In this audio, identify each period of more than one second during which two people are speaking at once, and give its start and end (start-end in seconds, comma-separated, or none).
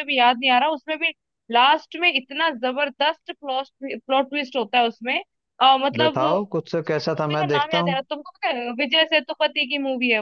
6.0-8.0